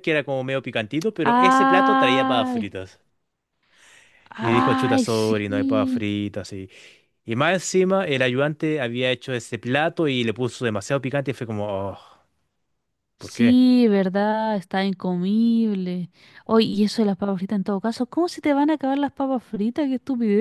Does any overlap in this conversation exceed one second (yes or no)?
yes